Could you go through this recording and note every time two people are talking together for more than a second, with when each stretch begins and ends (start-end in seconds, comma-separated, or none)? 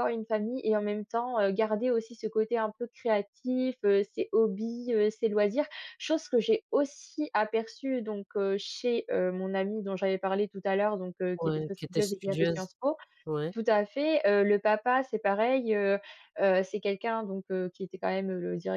11.4-12.7